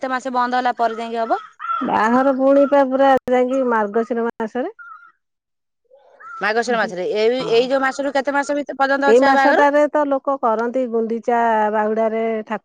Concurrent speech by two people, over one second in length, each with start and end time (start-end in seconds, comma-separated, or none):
none